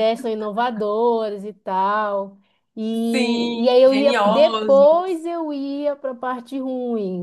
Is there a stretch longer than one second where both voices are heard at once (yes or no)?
yes